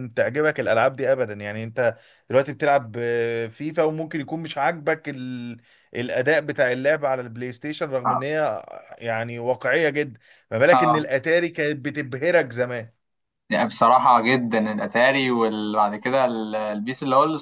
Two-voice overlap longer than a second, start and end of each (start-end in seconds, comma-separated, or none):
none